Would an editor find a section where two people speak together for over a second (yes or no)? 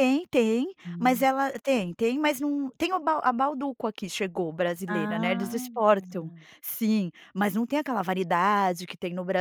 yes